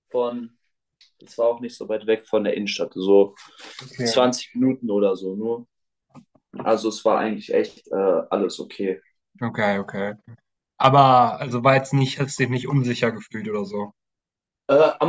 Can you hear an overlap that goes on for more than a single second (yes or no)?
no